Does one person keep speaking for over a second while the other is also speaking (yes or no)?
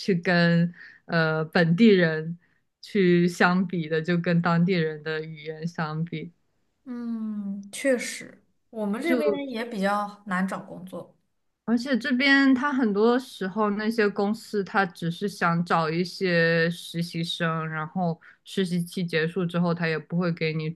no